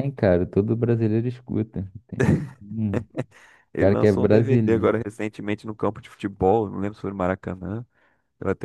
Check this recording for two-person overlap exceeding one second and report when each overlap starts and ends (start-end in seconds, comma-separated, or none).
3.8-5.0